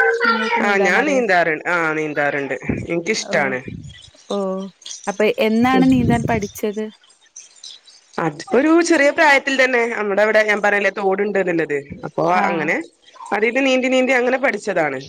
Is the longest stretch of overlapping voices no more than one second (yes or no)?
yes